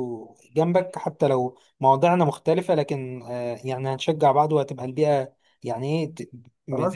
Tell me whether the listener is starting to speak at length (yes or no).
yes